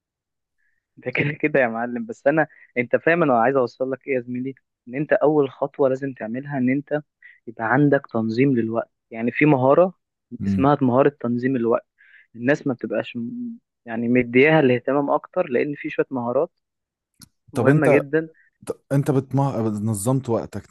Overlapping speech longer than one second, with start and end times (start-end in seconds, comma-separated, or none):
none